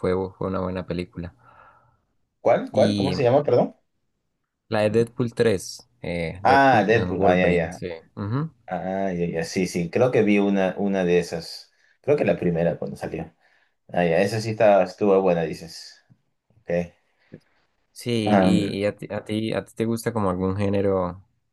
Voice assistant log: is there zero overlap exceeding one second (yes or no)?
no